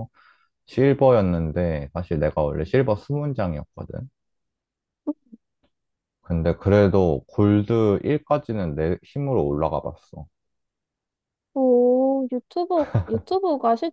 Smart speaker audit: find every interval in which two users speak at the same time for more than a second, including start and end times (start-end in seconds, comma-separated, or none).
none